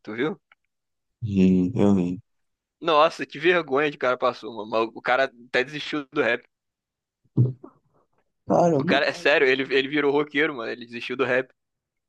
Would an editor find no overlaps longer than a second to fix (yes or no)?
yes